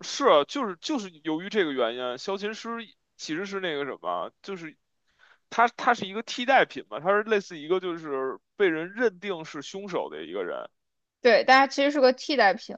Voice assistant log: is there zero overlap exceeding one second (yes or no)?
yes